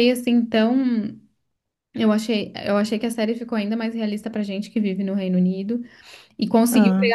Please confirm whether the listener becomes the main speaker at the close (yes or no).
no